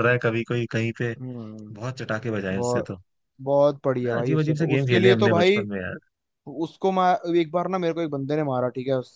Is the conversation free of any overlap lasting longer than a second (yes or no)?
no